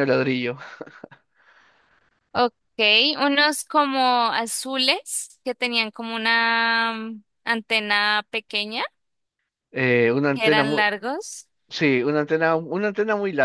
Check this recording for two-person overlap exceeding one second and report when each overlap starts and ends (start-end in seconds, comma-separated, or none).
none